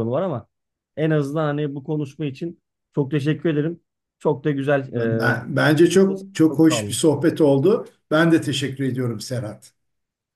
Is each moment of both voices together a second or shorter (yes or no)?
yes